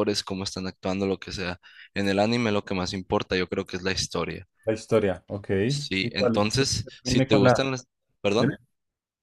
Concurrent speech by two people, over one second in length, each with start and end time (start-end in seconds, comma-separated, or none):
6.0-7.6